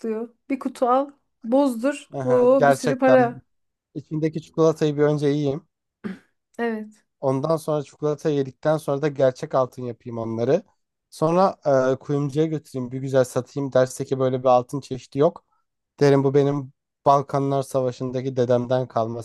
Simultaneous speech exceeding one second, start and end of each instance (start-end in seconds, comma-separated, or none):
2.1-3.4